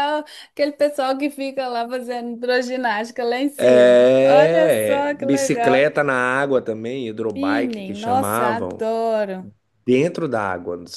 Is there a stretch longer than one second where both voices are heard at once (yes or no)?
yes